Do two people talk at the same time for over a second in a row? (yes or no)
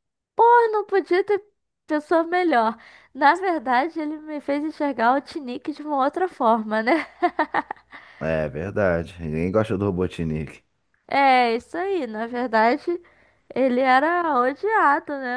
no